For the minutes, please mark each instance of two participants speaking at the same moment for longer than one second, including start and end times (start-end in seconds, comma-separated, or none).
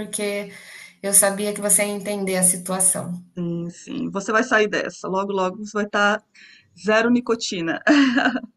none